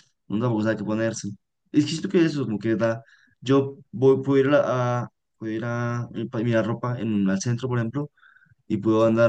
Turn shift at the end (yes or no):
no